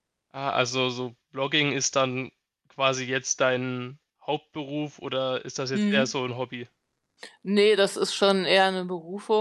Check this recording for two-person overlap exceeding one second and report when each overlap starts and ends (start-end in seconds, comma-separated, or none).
none